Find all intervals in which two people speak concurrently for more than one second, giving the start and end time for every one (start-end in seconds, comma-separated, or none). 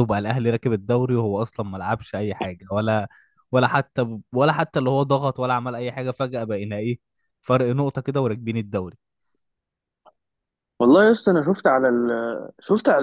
none